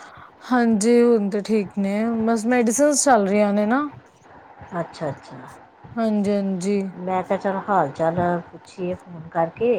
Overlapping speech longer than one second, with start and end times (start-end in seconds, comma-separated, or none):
none